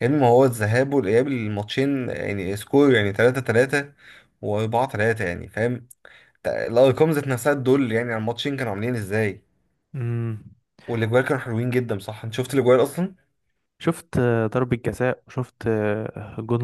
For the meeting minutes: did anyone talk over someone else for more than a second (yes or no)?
no